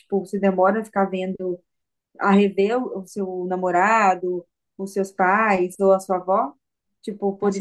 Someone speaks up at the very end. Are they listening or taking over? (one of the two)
taking over